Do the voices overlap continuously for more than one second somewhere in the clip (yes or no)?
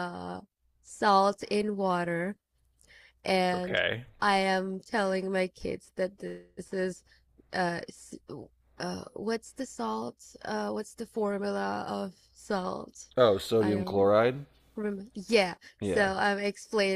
no